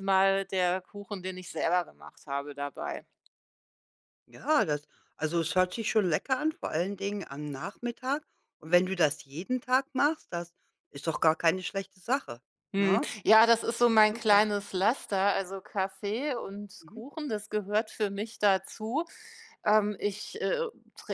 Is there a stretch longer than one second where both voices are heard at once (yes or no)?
no